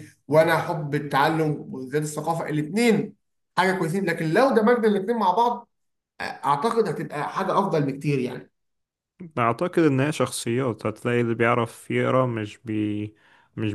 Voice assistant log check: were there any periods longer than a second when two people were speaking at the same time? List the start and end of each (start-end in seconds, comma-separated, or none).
none